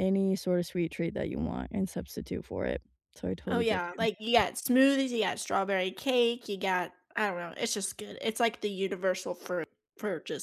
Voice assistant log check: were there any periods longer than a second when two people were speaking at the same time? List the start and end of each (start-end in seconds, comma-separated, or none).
none